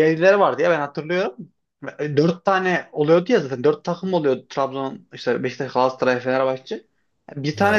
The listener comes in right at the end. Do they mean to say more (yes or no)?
no